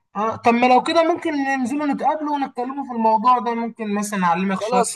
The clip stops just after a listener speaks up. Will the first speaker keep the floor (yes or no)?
no